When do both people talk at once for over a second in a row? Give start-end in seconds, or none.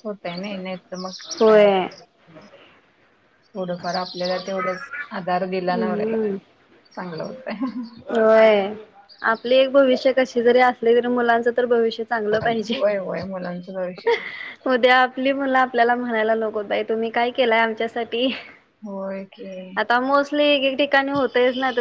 none